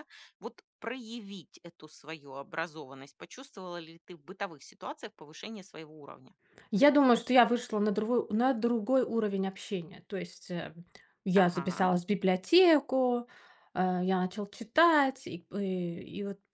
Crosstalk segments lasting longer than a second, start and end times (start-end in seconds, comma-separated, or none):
none